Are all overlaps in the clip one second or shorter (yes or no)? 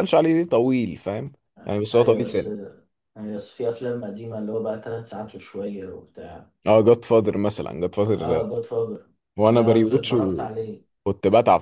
no